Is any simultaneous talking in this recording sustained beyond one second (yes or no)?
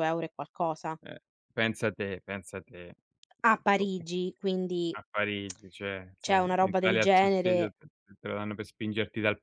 yes